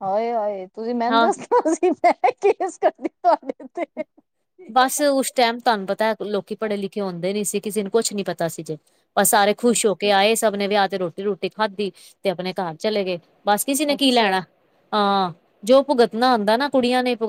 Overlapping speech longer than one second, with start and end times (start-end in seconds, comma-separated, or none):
none